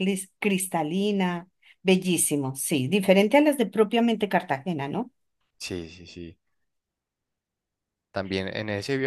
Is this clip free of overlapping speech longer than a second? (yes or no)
yes